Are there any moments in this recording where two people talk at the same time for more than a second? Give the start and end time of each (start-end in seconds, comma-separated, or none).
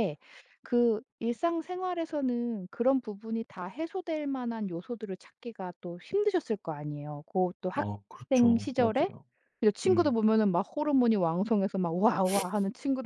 7.8-9.1